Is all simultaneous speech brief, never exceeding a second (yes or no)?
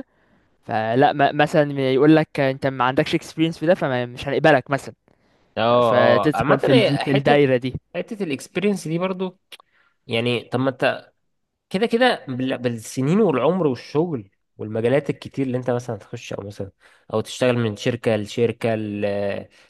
no